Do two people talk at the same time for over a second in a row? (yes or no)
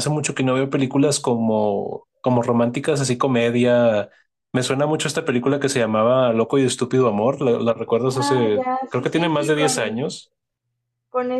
yes